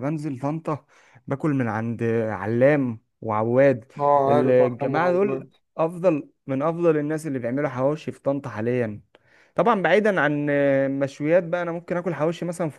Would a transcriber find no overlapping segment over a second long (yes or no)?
no